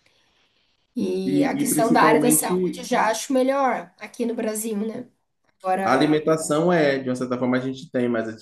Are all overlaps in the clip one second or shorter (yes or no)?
no